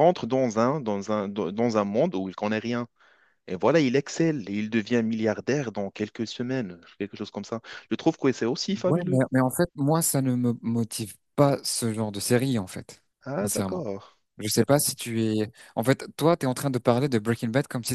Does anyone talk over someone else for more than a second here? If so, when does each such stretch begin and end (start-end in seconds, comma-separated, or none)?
none